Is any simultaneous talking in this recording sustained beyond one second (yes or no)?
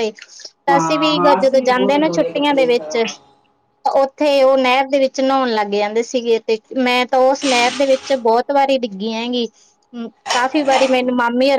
yes